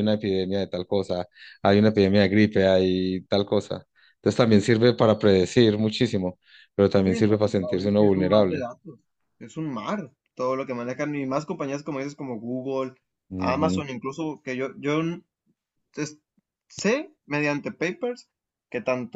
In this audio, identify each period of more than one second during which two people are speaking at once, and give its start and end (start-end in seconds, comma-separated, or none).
7.0-8.6